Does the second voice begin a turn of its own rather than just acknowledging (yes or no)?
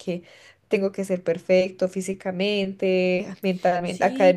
yes